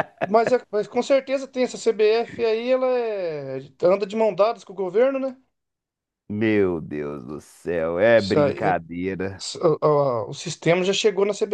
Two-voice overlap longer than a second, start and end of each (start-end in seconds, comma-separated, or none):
none